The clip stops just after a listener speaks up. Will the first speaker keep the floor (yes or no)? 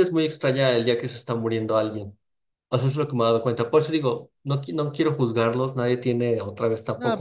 no